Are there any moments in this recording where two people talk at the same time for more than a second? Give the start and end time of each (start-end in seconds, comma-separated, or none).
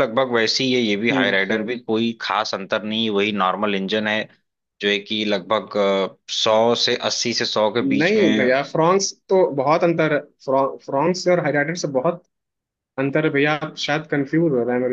none